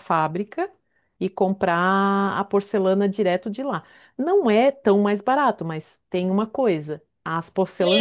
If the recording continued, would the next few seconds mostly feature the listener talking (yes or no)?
yes